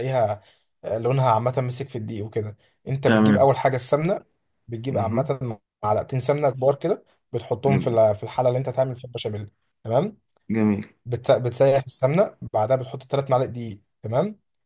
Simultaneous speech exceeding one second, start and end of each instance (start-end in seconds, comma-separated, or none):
none